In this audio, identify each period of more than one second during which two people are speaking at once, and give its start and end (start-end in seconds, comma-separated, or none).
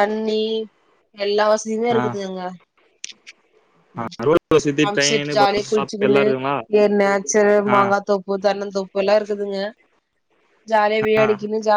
4.8-6.2